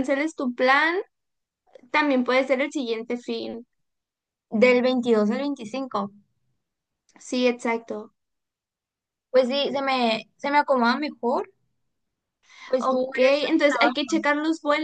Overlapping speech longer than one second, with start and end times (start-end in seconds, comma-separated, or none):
12.8-14.1